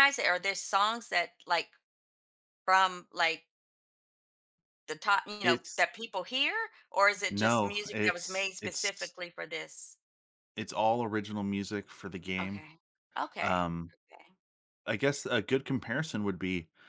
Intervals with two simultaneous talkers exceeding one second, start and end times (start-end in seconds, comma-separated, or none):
7.3-9.1